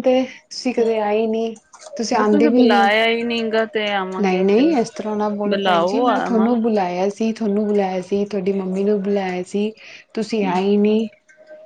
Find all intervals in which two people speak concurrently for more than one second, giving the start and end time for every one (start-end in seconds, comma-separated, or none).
5.5-6.9